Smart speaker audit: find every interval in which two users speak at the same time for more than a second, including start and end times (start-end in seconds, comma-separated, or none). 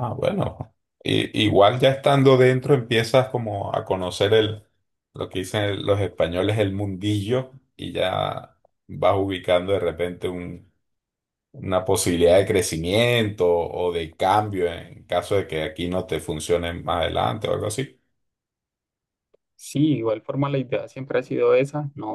none